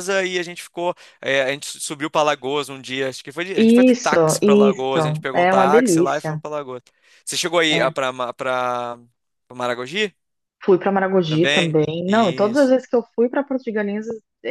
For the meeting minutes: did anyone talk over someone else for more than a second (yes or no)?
yes